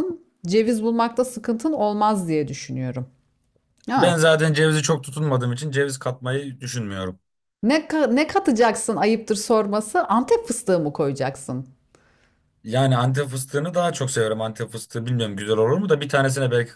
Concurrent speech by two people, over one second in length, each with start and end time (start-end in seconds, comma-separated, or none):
none